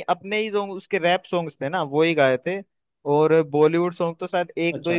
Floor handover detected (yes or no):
no